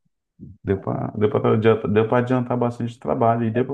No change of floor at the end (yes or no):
yes